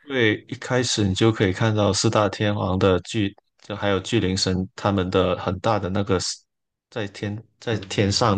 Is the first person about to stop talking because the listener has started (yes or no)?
no